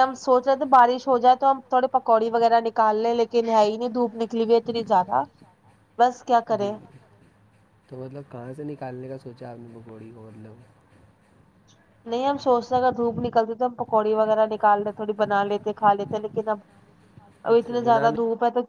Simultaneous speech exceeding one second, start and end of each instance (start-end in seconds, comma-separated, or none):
none